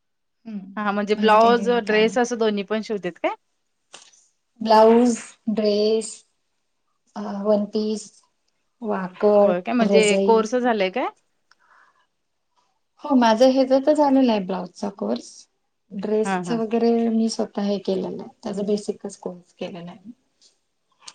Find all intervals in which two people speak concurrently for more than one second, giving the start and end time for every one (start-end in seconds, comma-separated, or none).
0.8-2.3